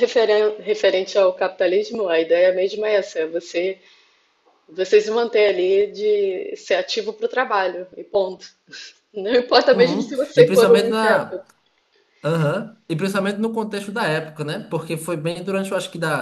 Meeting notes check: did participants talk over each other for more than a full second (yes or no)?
yes